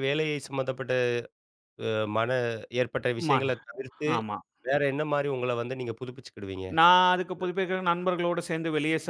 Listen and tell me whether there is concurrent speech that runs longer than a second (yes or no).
no